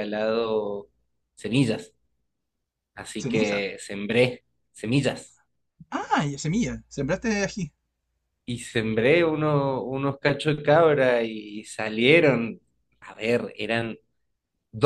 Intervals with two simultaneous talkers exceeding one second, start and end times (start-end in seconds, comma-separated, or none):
none